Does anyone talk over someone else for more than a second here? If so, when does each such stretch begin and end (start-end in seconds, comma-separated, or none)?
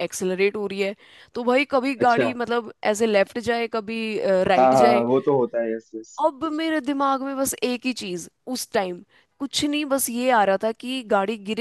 none